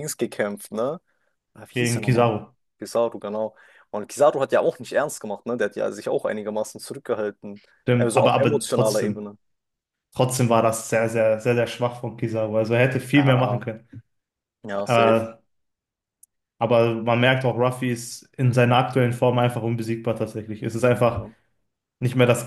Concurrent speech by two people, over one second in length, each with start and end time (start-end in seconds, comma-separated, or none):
7.8-9.2